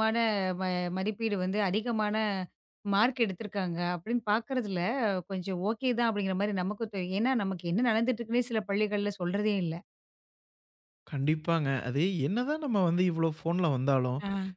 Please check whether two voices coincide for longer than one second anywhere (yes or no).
no